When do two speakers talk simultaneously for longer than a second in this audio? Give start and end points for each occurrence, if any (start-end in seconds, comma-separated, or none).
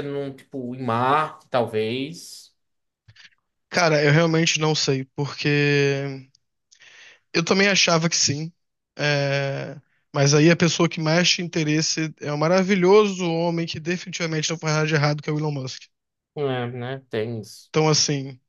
none